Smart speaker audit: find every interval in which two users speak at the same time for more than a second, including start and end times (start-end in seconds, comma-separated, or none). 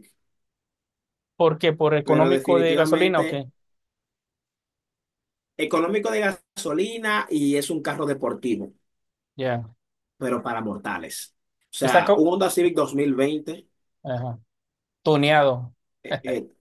2.0-3.4